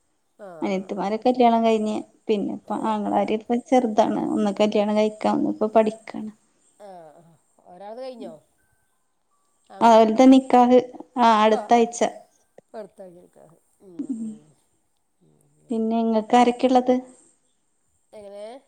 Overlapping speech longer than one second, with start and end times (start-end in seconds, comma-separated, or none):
none